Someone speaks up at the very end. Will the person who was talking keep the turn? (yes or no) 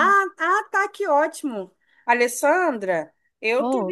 yes